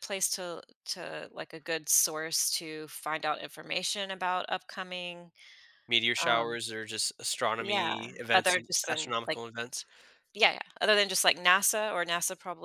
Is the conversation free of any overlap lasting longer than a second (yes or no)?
no